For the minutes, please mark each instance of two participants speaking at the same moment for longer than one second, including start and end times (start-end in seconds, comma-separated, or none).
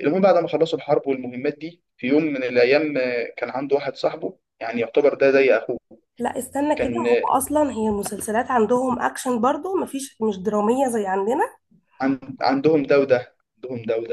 none